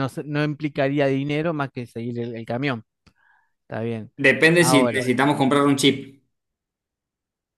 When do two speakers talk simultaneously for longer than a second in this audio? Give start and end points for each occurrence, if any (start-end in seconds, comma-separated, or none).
none